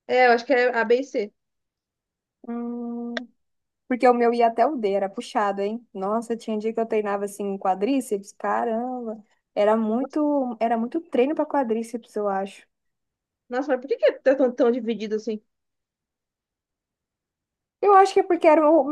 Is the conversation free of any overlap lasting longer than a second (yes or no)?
yes